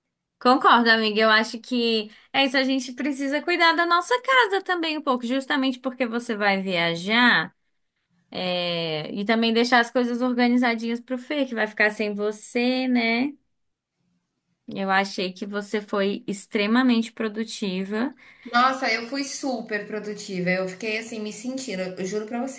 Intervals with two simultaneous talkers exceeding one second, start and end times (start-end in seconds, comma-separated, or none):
none